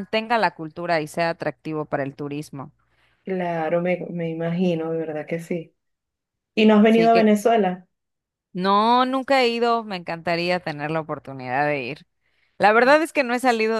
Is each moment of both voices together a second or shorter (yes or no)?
yes